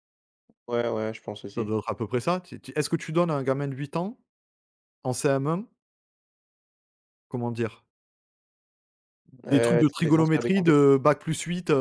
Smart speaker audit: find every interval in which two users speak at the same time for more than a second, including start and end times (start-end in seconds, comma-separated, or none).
9.5-10.8